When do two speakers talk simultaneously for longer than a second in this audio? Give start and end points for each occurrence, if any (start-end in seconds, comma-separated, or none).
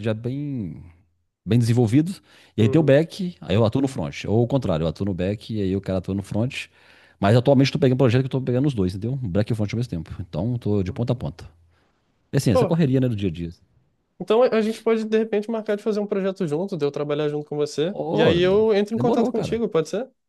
17.9-19.6